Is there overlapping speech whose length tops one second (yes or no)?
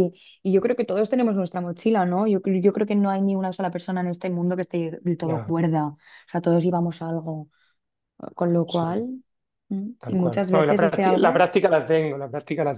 yes